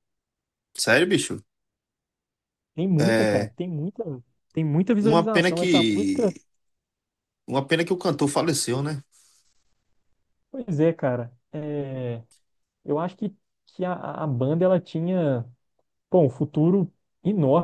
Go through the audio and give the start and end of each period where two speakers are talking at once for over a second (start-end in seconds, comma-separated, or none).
5.0-6.4